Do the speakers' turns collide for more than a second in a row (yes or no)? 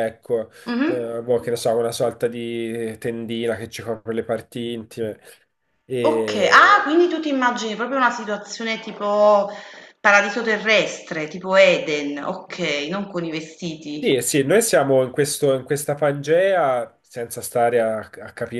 no